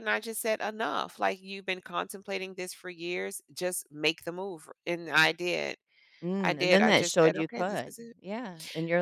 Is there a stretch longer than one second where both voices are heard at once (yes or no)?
yes